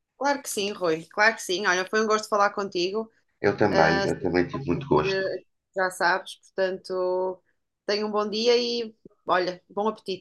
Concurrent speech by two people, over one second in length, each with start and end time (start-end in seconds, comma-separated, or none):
3.7-5.2